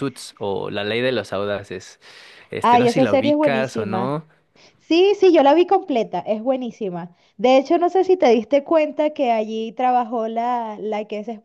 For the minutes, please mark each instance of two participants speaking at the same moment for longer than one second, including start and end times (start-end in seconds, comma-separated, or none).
2.6-4.1